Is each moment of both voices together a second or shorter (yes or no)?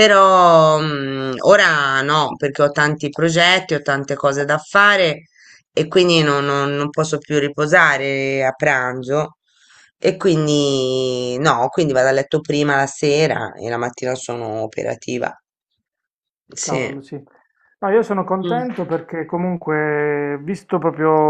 yes